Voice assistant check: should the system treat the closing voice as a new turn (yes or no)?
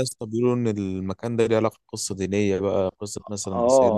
yes